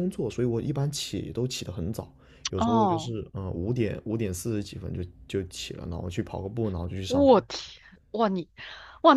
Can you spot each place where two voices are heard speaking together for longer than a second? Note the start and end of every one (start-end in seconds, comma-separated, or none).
none